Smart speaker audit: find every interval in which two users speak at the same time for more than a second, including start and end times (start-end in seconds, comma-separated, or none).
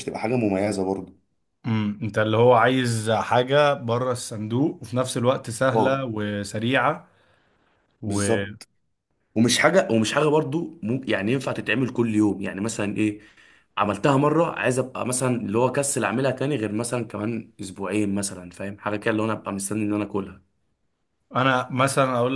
none